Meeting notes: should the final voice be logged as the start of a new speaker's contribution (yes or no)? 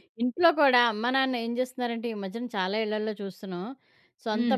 no